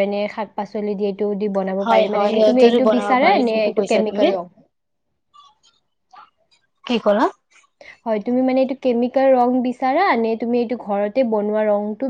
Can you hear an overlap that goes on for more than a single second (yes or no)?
yes